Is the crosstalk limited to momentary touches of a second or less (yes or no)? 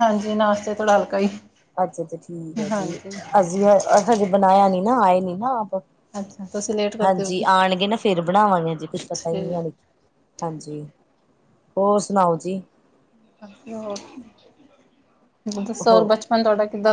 yes